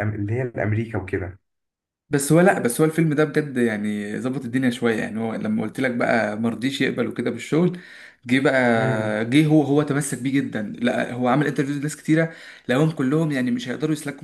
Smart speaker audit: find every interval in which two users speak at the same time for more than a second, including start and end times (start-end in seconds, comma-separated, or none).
none